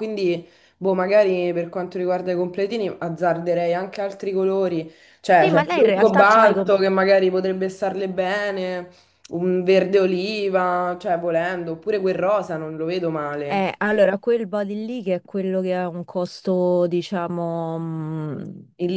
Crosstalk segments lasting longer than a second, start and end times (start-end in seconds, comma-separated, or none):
5.4-6.8